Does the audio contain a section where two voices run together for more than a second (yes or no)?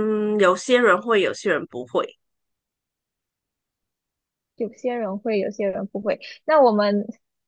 no